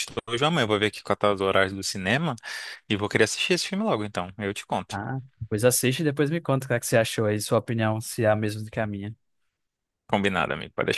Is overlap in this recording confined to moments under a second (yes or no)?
yes